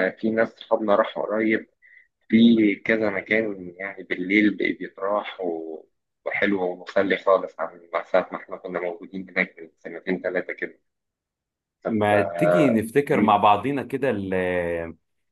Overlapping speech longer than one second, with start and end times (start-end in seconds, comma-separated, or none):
none